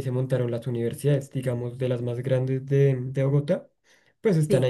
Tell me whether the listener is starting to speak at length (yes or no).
no